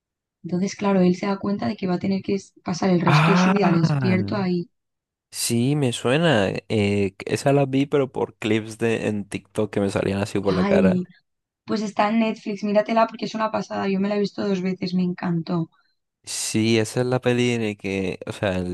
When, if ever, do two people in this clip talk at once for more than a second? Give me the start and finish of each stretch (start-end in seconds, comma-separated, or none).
3.1-4.5